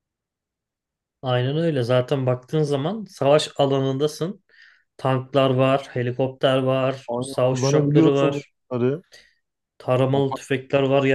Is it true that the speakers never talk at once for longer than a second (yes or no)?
no